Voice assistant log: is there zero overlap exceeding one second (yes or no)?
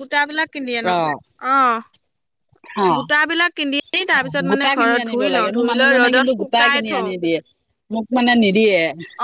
no